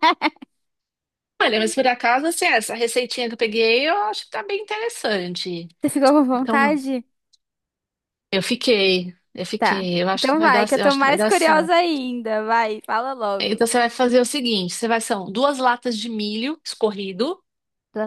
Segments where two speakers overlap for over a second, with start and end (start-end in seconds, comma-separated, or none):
9.6-11.7